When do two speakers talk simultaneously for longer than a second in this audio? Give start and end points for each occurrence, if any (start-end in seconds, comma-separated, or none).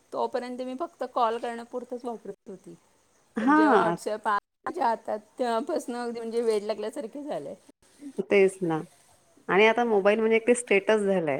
none